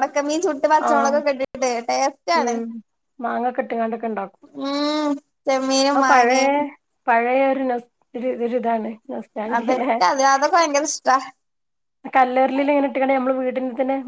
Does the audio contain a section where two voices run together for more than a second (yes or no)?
no